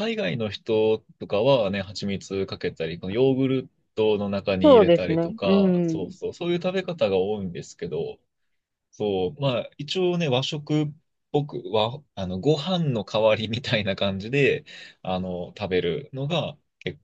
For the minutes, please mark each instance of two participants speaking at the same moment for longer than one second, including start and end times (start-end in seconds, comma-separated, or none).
4.6-6.1